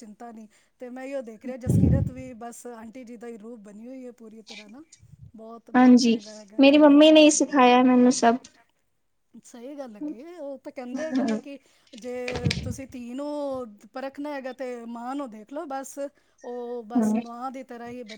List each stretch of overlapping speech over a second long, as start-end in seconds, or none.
none